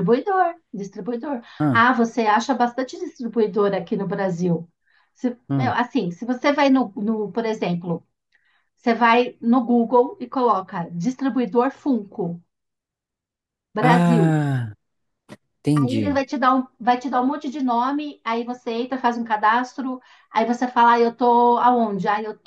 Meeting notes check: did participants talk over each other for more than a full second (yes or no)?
no